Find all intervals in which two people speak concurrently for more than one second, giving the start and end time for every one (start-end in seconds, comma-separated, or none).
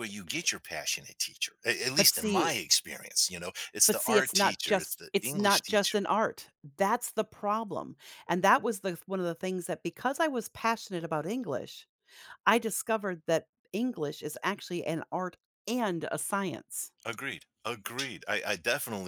3.9-6.0